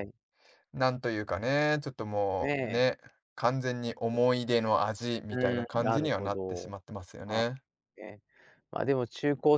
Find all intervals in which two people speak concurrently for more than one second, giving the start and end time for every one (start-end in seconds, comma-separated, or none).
5.3-6.7